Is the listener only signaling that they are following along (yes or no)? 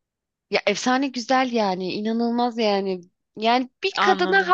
yes